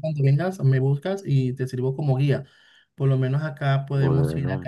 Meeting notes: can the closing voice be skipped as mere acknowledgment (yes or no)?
yes